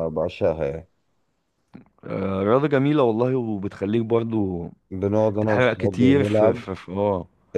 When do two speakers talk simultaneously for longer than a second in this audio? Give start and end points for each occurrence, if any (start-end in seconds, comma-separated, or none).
5.4-6.6